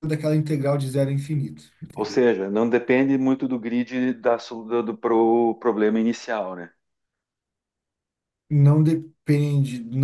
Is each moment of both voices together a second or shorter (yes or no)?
yes